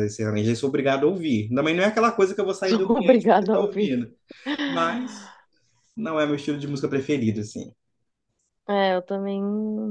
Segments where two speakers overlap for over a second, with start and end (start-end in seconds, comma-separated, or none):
2.7-4.0